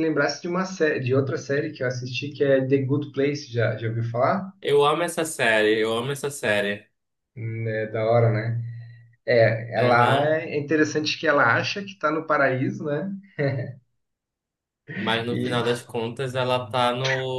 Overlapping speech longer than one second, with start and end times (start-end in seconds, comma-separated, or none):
none